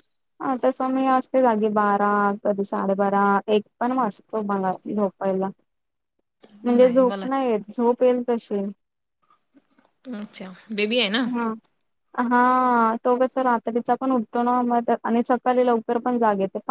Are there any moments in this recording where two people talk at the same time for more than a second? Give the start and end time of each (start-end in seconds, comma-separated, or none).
none